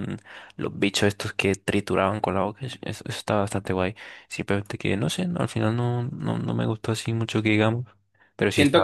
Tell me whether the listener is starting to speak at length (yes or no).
yes